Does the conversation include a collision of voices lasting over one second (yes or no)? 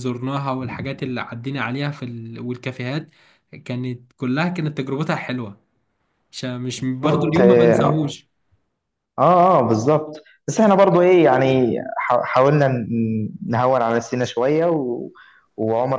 yes